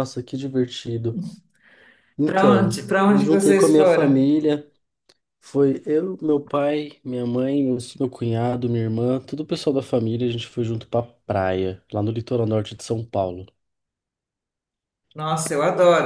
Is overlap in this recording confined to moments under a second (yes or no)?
no